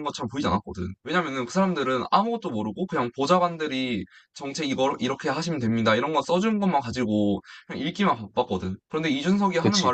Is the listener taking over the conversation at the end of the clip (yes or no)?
no